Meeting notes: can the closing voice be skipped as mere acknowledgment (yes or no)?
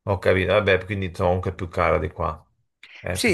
no